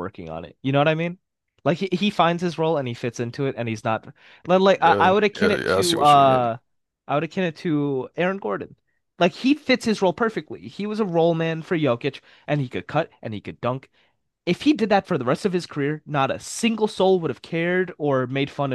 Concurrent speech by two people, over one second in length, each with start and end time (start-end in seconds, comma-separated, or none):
4.8-6.5